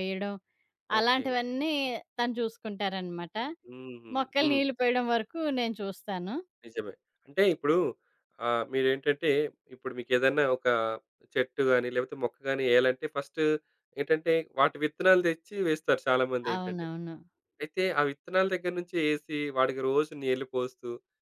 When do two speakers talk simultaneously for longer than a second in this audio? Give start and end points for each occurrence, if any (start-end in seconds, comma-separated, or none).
none